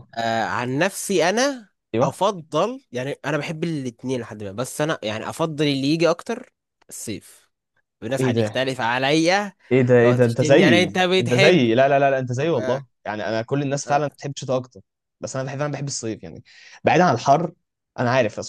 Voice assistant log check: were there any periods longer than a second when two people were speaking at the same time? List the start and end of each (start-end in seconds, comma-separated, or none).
10.0-11.7